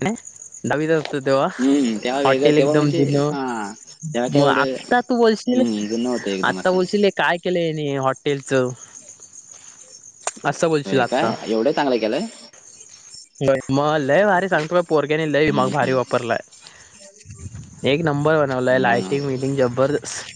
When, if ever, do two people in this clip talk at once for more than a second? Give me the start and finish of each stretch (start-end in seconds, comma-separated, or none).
1.4-3.4